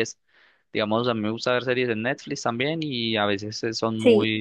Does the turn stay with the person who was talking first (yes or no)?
yes